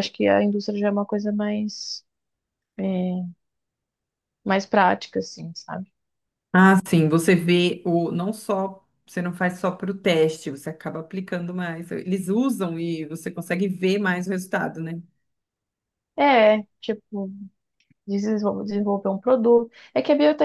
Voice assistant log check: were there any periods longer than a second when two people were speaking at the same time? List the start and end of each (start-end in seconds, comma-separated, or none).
none